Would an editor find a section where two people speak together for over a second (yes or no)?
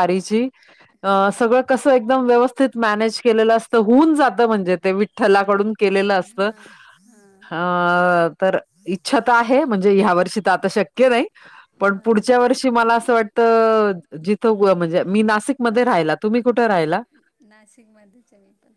no